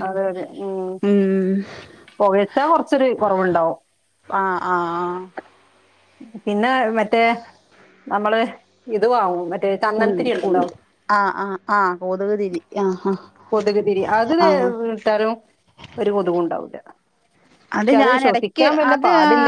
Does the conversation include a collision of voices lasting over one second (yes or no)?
no